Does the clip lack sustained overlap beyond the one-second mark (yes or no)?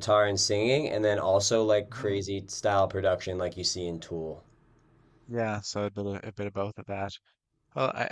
yes